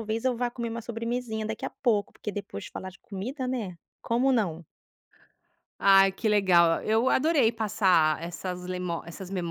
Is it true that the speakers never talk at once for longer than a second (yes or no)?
yes